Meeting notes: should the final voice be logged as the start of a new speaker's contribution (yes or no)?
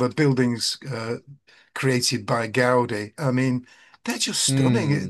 yes